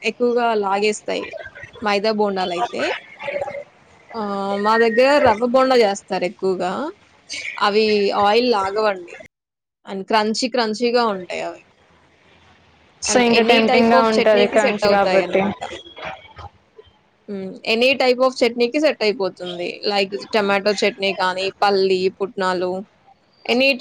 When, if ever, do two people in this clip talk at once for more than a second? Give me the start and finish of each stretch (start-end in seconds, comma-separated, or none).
13.1-15.4